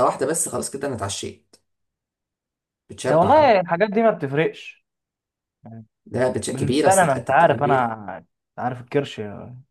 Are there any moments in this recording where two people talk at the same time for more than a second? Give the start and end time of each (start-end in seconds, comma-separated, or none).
6.5-7.9